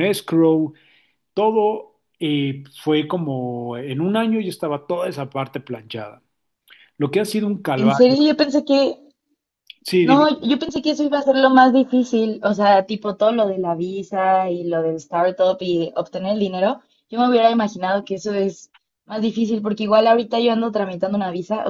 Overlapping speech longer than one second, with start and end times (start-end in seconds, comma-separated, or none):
none